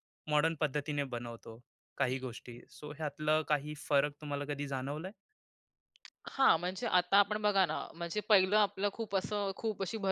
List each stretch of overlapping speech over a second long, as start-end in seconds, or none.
none